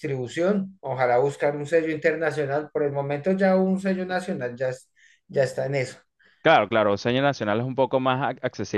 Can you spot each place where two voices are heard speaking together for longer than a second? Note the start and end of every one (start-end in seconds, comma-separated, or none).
none